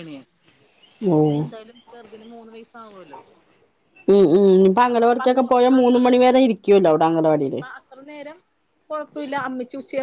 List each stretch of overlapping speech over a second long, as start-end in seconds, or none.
none